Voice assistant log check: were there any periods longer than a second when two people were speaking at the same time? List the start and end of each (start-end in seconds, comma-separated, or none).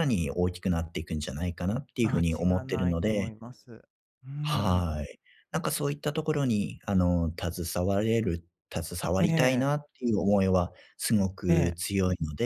2.0-3.3